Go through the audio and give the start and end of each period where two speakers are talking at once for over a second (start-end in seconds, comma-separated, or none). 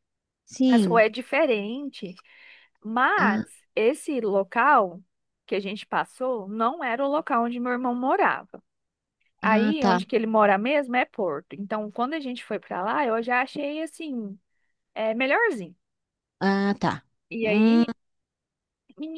none